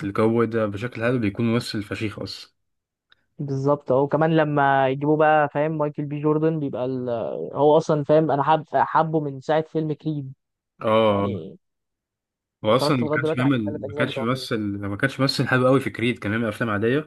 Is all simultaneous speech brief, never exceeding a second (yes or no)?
no